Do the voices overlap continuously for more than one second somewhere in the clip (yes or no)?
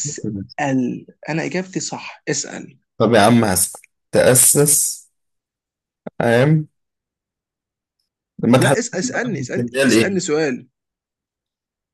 yes